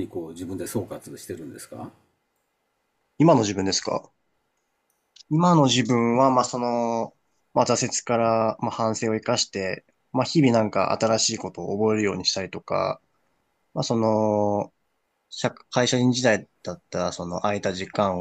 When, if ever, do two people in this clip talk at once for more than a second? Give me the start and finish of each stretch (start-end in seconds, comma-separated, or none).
none